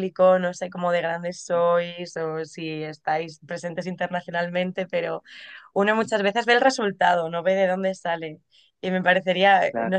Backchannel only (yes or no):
yes